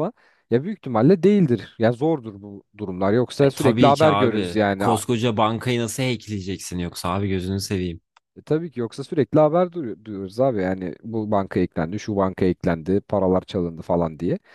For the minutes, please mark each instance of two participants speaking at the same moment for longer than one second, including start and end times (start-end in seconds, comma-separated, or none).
3.4-5.0